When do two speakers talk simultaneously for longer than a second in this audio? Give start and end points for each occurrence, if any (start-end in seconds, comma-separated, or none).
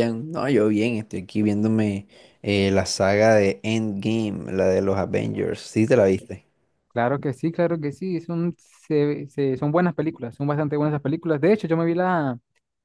none